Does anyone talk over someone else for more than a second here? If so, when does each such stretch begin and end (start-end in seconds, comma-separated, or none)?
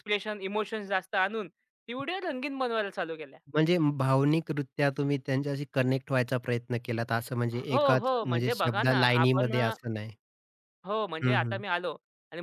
7.7-9.7